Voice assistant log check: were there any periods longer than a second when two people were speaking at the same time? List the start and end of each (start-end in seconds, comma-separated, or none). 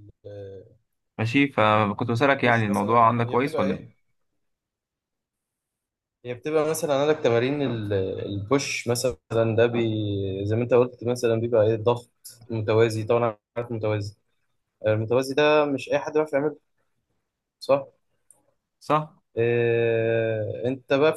2.7-3.9